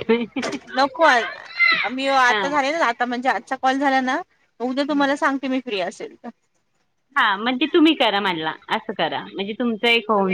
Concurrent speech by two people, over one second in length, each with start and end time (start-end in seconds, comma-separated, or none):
none